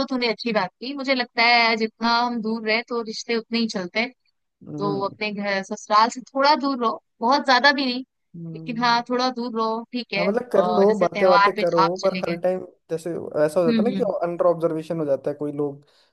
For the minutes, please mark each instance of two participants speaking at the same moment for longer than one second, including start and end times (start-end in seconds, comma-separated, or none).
10.2-12.4